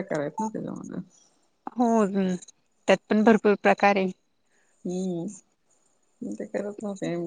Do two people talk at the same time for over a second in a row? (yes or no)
no